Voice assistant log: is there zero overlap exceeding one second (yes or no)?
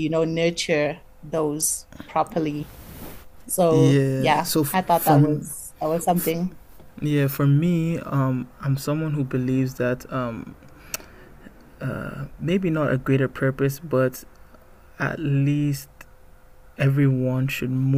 no